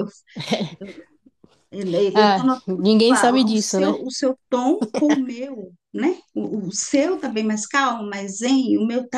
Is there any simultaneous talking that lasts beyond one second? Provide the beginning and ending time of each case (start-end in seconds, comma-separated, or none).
2.1-4.0